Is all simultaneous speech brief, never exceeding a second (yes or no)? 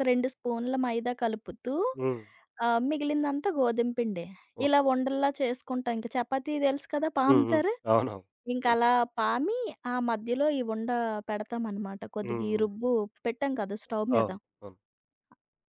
yes